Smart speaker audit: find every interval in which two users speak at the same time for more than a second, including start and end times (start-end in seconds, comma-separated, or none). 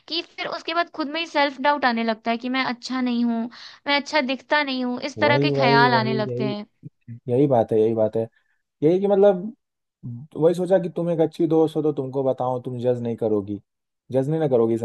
5.2-6.5